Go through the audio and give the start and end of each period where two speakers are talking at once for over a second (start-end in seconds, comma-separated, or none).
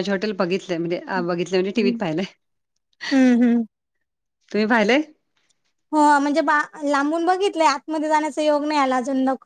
none